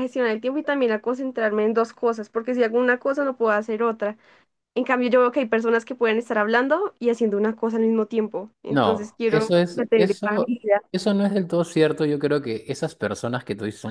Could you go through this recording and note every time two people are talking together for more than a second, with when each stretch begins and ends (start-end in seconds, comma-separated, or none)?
8.7-10.6